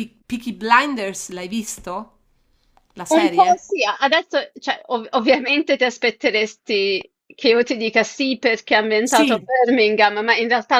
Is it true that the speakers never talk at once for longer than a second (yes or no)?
yes